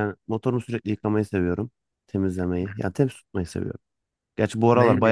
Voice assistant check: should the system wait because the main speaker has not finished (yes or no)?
no